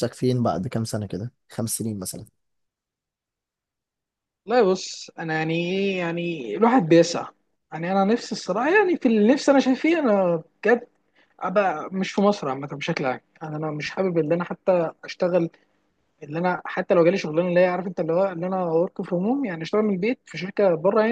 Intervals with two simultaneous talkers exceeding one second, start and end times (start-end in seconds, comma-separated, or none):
none